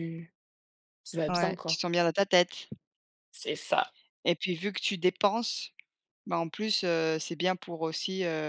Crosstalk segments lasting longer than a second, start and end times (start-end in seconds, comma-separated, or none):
none